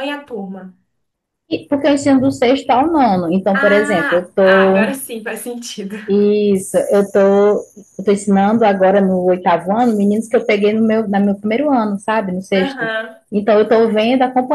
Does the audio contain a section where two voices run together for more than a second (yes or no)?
yes